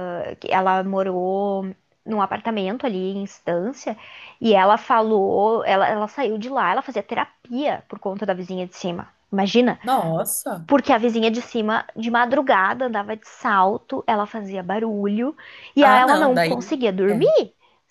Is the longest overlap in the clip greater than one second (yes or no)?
yes